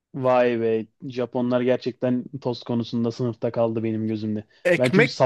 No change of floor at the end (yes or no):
no